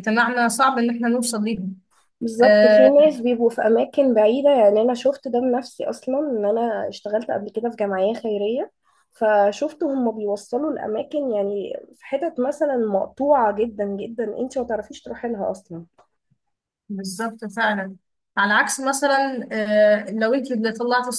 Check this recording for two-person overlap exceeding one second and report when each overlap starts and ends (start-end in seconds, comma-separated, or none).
none